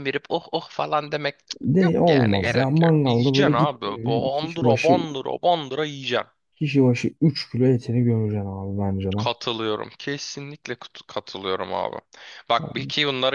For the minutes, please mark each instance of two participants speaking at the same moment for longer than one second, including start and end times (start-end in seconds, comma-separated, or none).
1.6-5.0